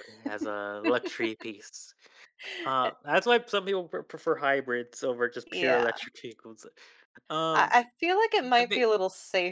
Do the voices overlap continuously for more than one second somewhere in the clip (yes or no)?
no